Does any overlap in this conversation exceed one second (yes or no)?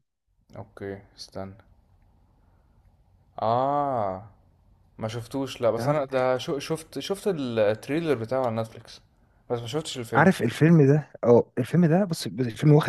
no